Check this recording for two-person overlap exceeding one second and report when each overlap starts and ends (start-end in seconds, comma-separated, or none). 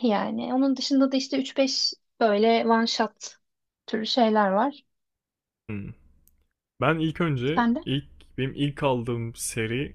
none